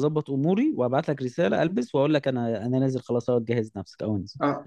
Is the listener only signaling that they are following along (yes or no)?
no